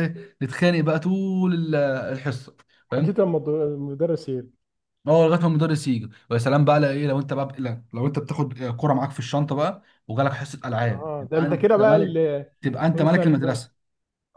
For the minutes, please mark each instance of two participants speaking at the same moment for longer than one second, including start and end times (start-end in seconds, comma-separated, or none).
10.9-12.2